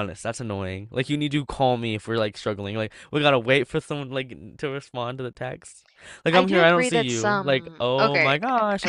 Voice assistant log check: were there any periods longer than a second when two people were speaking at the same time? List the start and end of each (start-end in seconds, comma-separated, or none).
6.3-8.3